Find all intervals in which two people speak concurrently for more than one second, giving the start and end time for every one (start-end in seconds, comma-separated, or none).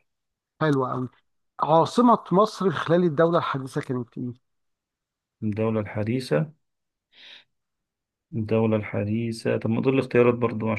none